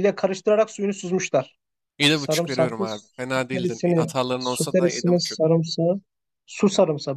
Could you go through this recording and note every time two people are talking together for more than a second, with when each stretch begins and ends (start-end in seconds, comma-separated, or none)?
2.1-5.4